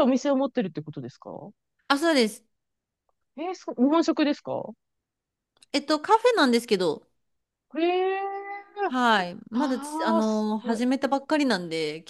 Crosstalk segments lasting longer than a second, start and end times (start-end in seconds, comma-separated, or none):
9.5-10.8